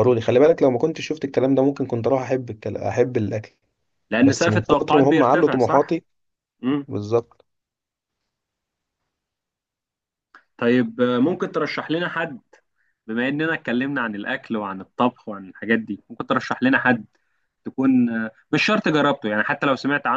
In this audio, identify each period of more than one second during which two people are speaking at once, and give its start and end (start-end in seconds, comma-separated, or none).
4.2-6.0